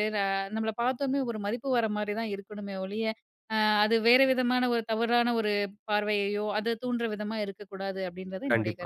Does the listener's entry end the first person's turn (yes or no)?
yes